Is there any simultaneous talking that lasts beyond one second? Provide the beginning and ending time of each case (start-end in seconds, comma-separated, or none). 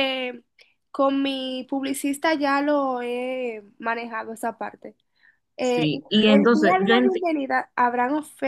5.6-7.3